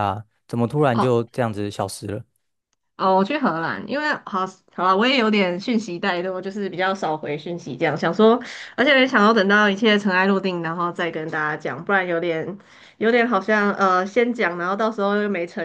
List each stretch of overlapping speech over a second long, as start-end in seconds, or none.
none